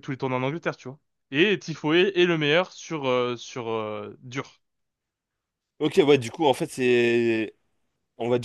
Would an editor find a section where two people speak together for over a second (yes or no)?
no